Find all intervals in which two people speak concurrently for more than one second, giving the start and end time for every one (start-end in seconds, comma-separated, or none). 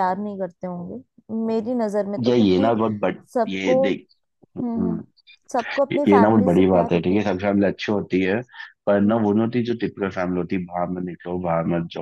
5.9-7.3